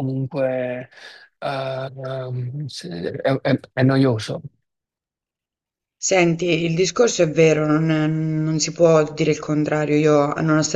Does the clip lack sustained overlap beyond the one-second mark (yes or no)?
yes